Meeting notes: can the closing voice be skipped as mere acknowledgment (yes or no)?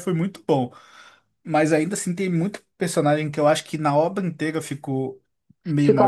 no